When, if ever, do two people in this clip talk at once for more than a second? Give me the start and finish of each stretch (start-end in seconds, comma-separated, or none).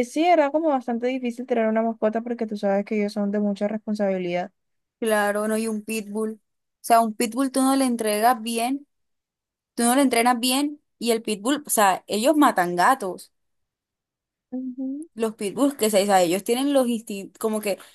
none